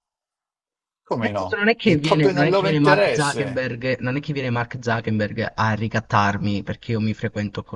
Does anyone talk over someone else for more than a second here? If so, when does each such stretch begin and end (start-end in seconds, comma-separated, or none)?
1.2-3.6